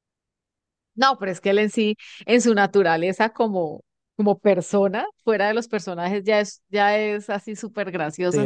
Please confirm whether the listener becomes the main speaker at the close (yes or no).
yes